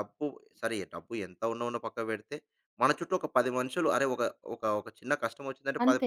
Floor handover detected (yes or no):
no